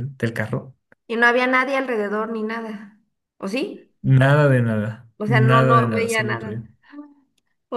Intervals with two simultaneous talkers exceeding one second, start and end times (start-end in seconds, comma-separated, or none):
5.2-6.6